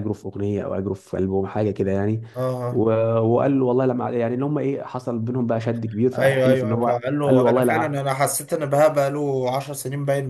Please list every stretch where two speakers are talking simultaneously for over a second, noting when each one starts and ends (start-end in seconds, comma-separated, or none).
6.2-8.0